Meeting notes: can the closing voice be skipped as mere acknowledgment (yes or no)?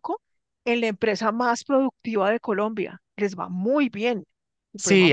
no